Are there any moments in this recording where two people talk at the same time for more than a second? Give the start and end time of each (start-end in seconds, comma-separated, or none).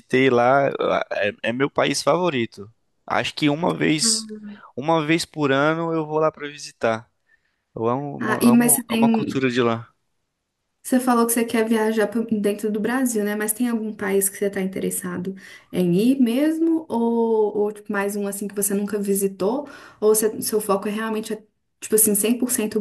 8.2-9.4